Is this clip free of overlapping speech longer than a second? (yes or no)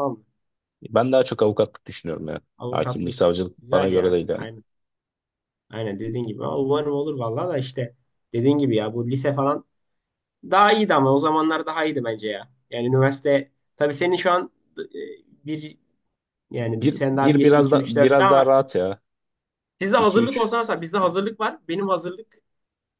no